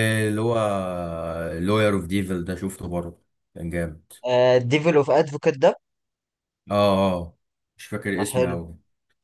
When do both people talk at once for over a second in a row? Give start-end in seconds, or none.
none